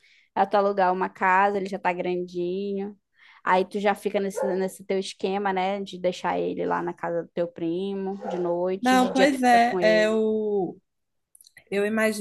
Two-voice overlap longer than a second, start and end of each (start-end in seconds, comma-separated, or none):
8.8-10.2